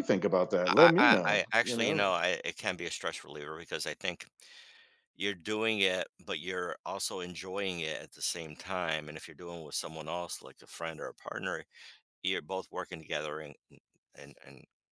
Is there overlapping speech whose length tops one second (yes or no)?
yes